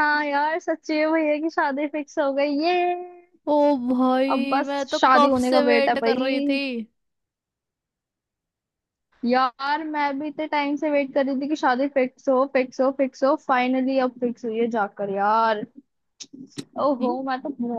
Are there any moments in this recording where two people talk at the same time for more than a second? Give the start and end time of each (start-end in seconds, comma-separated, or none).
4.3-6.3